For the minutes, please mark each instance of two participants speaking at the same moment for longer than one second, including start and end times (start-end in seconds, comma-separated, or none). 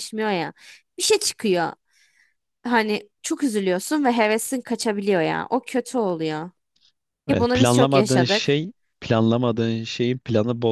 7.3-8.6